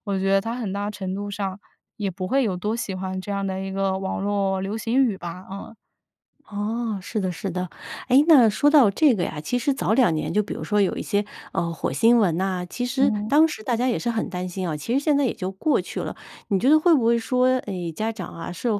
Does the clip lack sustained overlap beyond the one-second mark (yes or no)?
yes